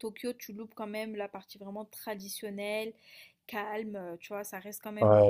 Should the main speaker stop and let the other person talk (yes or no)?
yes